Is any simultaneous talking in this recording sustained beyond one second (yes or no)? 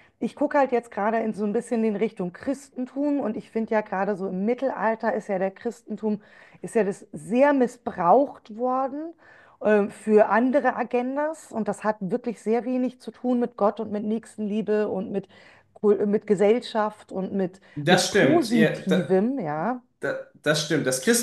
yes